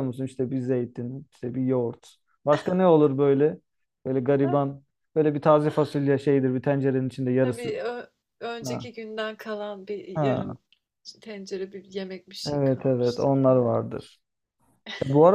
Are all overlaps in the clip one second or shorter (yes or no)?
no